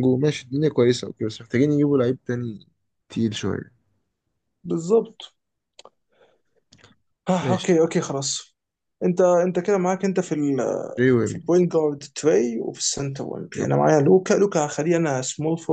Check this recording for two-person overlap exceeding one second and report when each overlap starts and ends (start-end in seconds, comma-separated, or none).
none